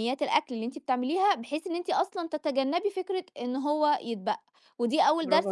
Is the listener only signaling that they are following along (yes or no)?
yes